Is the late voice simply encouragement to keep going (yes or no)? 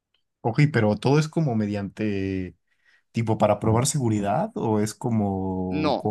no